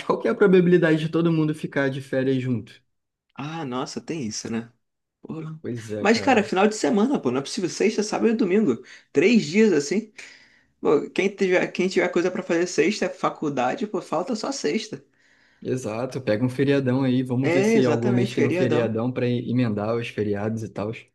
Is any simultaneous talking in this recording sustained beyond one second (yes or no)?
yes